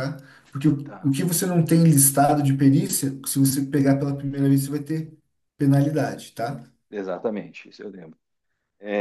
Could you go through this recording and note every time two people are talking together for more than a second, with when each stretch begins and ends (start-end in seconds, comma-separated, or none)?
none